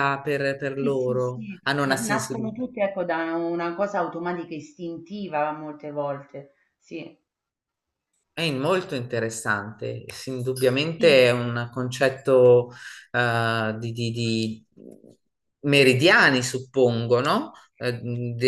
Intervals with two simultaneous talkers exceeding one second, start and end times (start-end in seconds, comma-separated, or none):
0.8-2.6